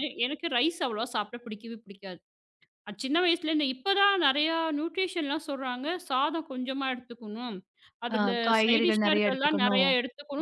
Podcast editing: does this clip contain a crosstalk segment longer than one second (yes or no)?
yes